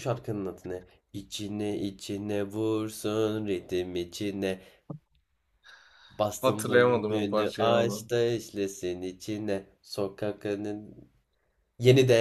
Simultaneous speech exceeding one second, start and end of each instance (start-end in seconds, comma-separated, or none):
6.4-8.0